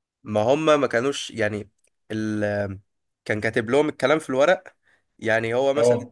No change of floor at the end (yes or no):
yes